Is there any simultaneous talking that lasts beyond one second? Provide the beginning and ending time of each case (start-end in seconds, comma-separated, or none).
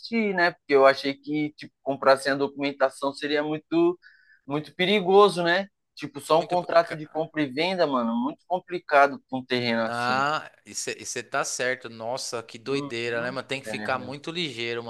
12.7-14.1